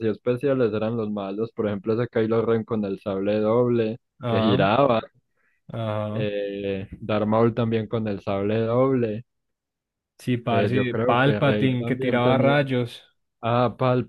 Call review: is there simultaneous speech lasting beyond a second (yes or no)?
yes